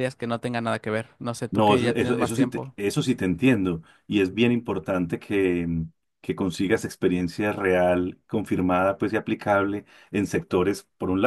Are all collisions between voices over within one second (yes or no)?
no